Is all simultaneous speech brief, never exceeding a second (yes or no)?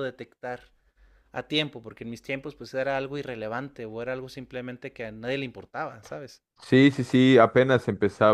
yes